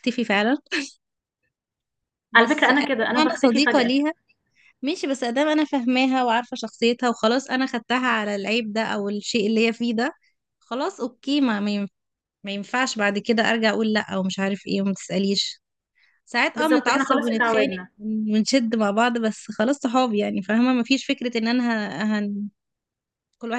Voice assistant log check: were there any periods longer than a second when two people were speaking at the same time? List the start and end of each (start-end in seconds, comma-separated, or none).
2.3-3.9, 16.5-17.9